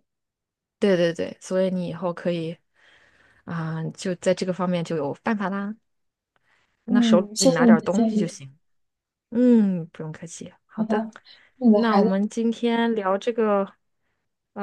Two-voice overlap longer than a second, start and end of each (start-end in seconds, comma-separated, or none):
6.9-8.4